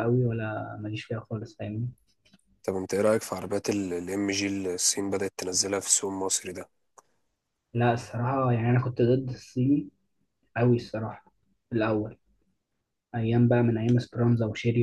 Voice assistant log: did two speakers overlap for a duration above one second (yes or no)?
no